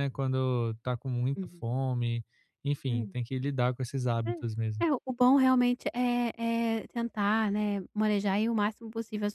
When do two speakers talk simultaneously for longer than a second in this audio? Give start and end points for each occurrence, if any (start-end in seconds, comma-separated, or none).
none